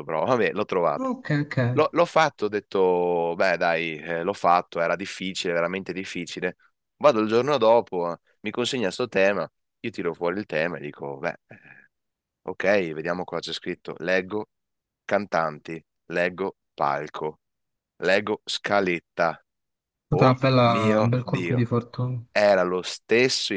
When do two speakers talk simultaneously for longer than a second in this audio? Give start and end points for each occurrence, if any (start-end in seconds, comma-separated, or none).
20.1-21.7